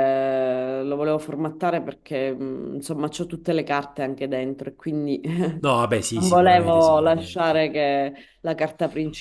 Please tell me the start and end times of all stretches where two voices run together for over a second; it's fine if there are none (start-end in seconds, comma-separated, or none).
6.1-7.7